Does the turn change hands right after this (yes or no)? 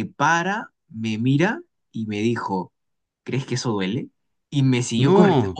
no